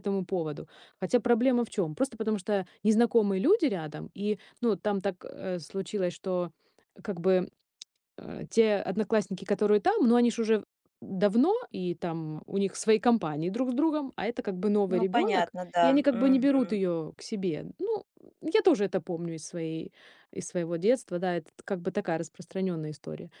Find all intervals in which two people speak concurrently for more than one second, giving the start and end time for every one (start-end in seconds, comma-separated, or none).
14.9-16.8